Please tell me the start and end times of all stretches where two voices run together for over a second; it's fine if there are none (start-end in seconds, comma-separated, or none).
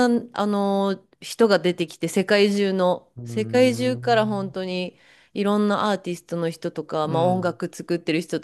3.2-4.5